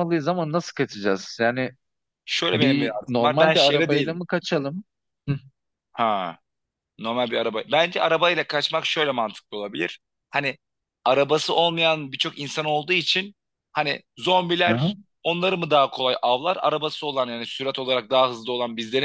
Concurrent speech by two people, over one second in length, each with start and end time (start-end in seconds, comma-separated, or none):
2.5-4.2